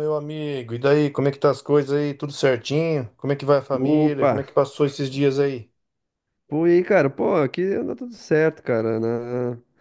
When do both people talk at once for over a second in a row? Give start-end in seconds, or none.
none